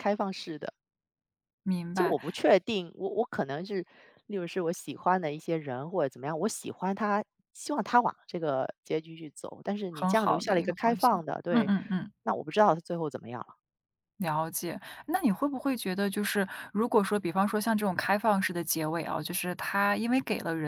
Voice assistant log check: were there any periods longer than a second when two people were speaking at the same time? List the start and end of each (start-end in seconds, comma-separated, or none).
9.9-11.7